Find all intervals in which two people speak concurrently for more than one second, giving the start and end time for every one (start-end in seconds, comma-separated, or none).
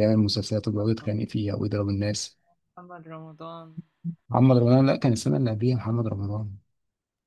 none